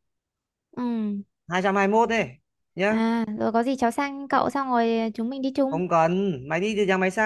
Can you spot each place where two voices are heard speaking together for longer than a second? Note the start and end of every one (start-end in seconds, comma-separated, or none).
none